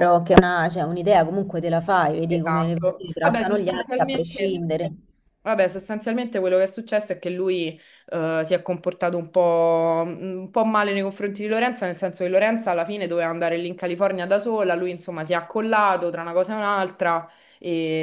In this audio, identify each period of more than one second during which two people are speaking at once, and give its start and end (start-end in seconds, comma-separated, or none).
2.3-4.6